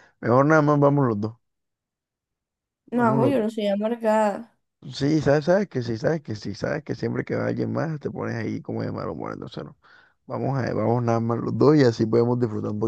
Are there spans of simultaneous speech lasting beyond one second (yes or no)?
no